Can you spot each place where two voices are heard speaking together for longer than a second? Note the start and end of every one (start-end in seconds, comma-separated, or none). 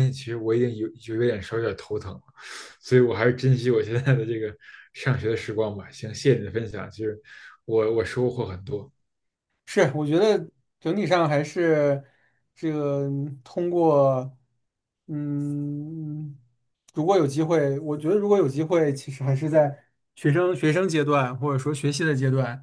none